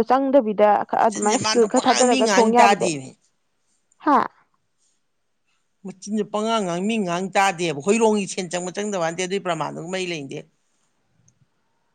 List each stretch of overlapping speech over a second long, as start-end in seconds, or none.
1.0-2.9